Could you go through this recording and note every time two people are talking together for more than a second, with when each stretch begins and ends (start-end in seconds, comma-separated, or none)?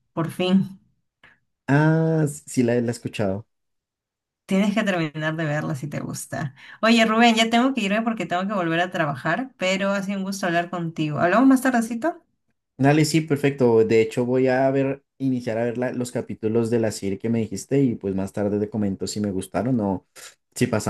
none